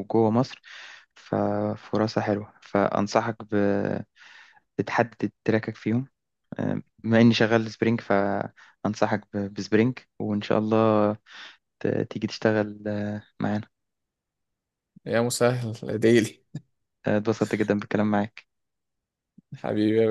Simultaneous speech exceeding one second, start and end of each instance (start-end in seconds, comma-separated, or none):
none